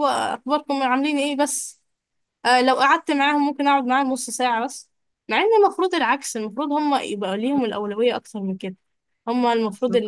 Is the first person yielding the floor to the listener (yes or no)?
no